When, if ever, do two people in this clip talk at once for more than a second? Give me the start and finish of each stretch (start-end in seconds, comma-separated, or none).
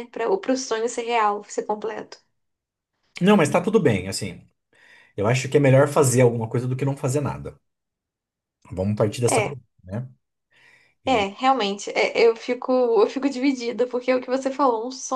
none